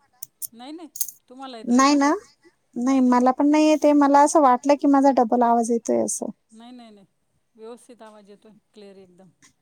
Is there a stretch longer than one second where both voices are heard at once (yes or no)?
no